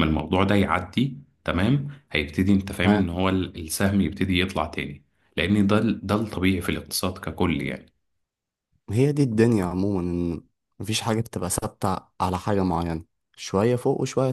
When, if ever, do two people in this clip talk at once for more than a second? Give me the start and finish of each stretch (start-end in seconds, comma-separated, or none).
none